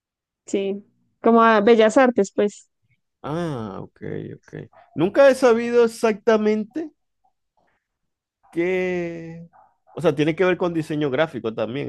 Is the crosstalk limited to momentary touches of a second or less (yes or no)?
yes